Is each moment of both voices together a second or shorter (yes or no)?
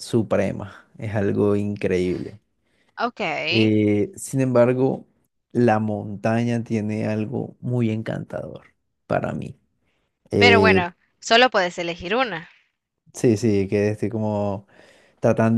yes